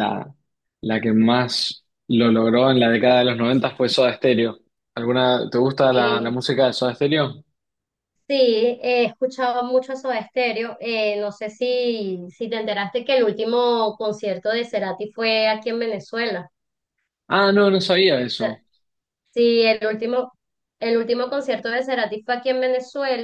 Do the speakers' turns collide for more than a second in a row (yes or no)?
no